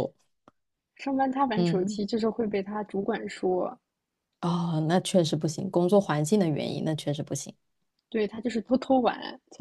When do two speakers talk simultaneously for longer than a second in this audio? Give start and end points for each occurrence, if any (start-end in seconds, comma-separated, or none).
none